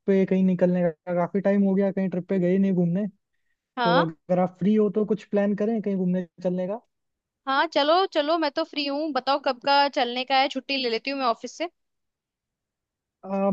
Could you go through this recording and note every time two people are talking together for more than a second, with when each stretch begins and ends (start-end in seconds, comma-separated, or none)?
none